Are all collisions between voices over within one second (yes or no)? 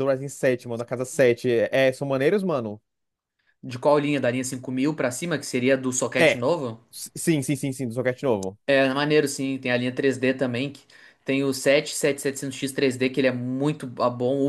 yes